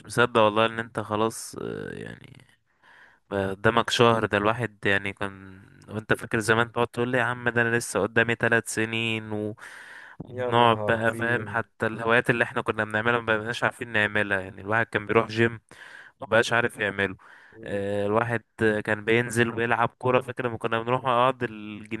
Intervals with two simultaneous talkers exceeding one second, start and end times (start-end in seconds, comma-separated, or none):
10.3-11.6